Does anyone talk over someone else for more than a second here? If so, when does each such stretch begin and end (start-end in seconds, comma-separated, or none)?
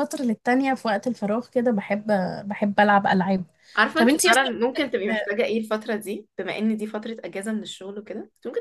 none